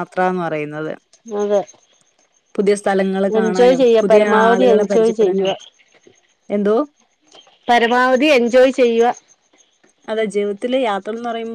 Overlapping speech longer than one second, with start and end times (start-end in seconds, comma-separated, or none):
3.4-5.5